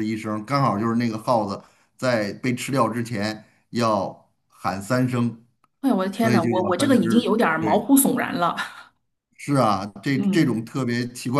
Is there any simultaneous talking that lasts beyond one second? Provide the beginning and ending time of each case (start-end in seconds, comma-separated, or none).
6.1-7.9